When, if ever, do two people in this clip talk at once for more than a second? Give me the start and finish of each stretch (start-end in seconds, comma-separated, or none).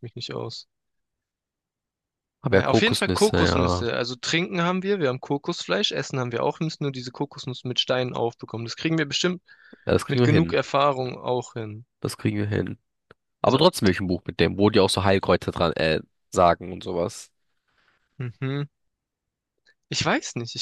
2.5-3.9